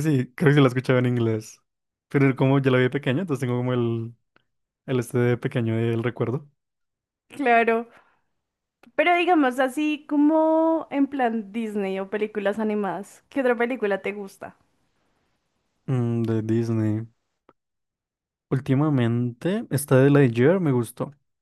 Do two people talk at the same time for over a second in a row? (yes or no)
no